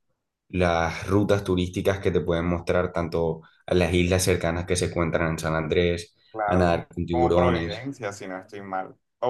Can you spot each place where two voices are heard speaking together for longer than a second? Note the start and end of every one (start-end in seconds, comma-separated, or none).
6.3-7.9